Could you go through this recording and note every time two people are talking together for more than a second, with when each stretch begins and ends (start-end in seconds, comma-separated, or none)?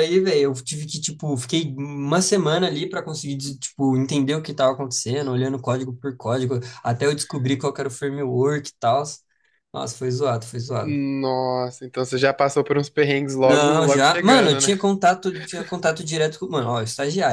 13.4-14.7